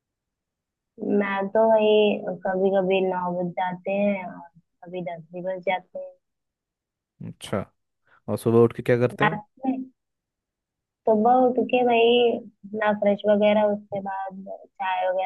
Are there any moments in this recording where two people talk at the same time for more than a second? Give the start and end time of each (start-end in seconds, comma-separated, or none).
none